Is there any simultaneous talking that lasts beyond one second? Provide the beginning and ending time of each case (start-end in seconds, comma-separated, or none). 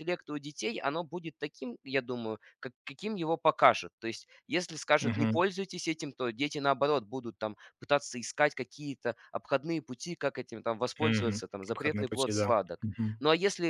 11.0-13.2